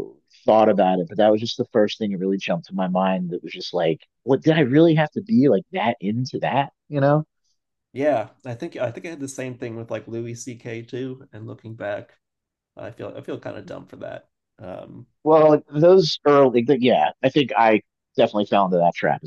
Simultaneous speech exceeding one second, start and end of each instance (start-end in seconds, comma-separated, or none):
none